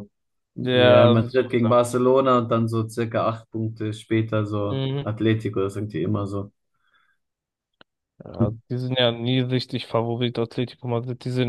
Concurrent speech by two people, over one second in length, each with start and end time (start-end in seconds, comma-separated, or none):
0.6-1.8